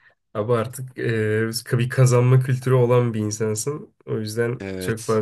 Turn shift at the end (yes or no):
no